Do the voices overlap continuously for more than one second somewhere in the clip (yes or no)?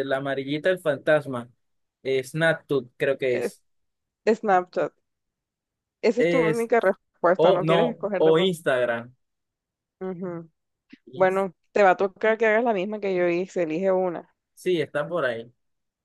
yes